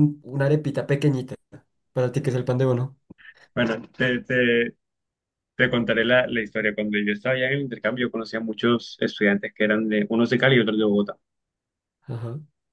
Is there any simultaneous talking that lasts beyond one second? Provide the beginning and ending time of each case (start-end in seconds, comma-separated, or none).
none